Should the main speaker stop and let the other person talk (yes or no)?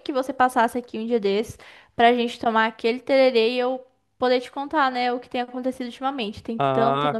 yes